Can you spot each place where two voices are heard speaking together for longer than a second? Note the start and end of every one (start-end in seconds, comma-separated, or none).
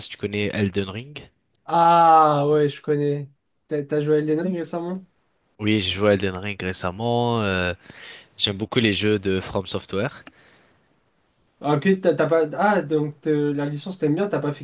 none